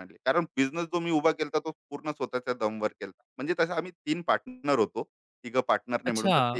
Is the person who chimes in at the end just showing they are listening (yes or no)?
no